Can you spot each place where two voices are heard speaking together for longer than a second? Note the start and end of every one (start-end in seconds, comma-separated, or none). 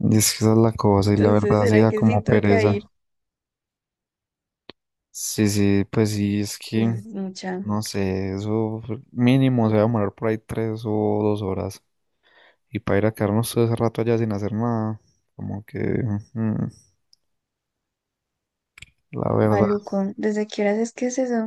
1.0-2.8